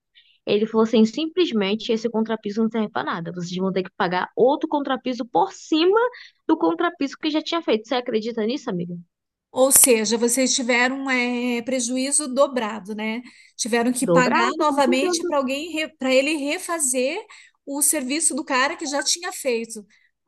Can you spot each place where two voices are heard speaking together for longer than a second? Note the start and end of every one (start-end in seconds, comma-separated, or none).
14.0-15.3